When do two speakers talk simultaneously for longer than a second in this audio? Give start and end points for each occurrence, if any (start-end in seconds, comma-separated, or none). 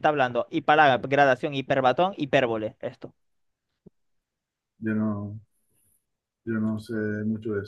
none